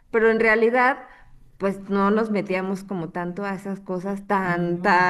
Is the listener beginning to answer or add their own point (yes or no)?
no